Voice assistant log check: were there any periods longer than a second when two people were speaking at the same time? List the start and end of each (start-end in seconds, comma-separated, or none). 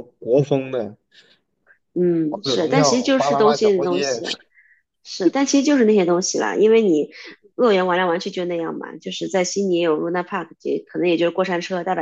2.3-4.2